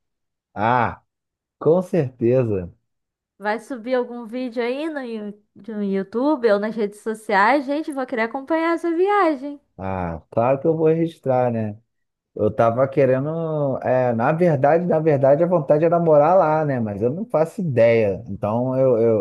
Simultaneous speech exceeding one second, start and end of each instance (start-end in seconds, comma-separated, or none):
none